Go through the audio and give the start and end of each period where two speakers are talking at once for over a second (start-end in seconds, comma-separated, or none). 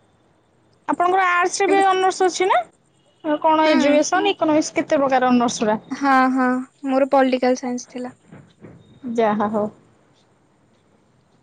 none